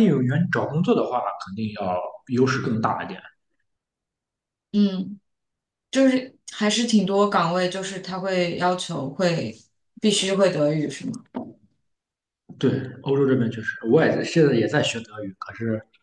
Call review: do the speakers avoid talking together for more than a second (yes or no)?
yes